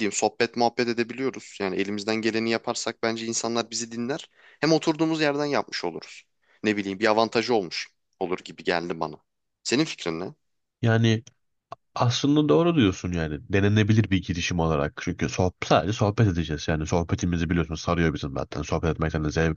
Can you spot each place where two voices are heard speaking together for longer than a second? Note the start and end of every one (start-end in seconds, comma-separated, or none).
none